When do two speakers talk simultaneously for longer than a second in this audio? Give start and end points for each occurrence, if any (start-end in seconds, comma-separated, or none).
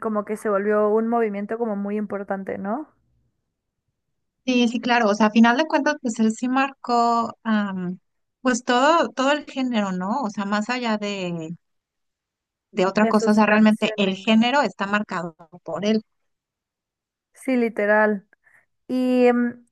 13.0-14.3